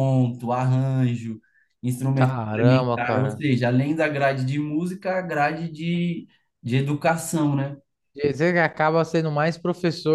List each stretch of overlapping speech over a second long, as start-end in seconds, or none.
2.1-3.4